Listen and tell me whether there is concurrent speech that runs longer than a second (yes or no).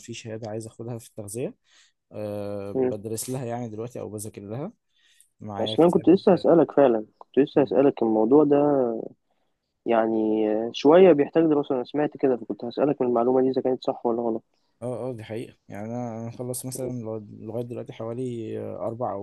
no